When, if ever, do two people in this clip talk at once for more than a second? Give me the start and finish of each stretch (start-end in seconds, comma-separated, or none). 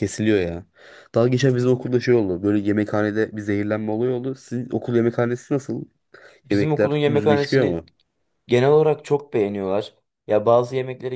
6.5-7.8